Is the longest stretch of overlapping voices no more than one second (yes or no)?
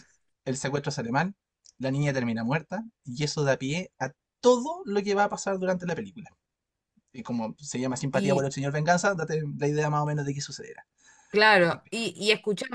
yes